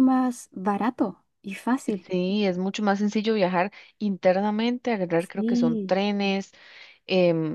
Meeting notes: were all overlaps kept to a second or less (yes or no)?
yes